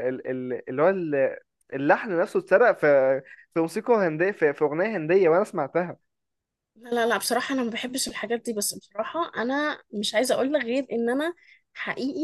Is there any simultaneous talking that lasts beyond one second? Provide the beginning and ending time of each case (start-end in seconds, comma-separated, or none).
none